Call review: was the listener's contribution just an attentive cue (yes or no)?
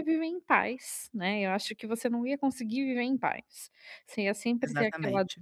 yes